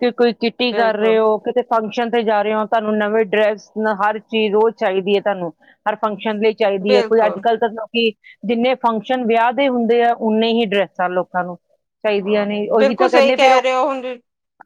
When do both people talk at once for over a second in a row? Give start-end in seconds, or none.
12.2-13.6